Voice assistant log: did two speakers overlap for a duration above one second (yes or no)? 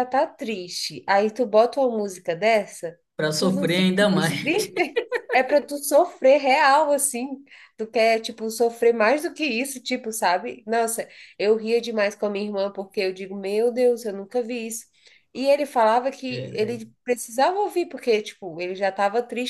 yes